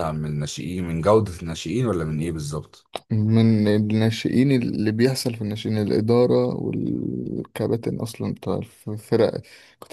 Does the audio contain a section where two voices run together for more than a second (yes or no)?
no